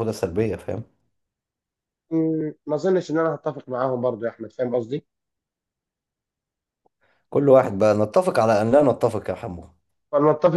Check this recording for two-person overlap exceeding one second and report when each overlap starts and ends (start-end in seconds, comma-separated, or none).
none